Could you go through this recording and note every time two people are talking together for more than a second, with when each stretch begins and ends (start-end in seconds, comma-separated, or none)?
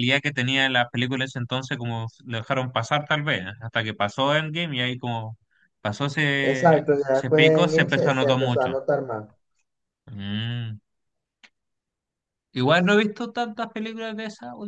6.4-8.7